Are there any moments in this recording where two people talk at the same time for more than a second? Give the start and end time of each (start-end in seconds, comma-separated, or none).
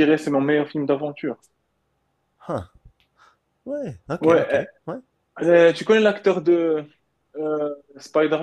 none